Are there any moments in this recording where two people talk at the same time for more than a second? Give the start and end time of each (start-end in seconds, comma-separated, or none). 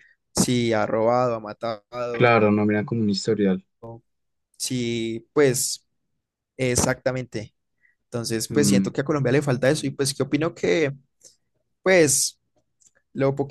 none